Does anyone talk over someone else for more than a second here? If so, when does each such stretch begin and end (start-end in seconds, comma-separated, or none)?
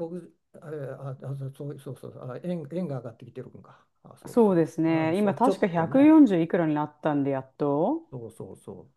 4.3-6.1